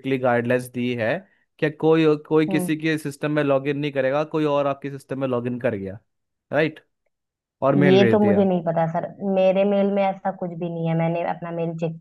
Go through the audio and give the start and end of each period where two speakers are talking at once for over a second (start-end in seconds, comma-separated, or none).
none